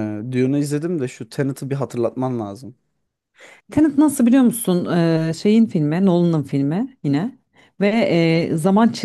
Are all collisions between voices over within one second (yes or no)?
yes